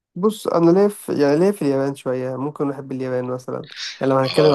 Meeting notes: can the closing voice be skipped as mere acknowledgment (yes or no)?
no